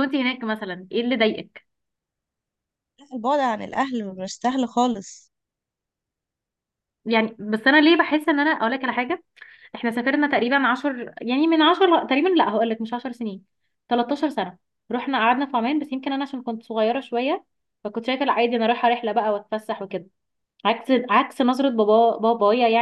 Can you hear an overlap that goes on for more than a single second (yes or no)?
no